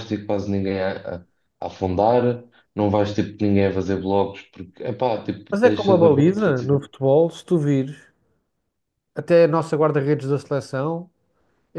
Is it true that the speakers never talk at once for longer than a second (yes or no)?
no